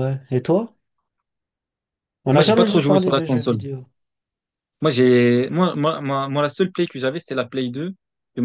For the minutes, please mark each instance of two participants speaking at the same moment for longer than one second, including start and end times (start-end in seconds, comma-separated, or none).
2.3-3.6